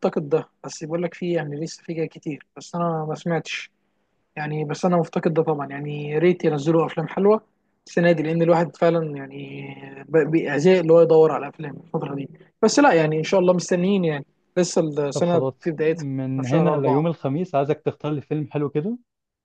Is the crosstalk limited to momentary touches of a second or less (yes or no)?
no